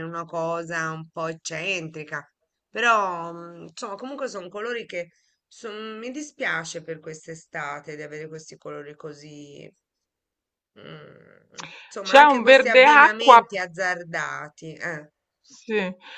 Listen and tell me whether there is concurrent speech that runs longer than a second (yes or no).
yes